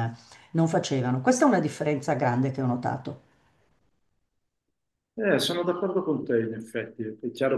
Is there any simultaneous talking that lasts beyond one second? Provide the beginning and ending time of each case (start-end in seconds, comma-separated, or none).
none